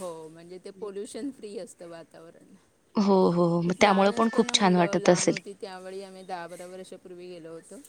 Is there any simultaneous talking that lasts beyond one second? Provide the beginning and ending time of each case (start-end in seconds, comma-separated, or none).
3.8-5.3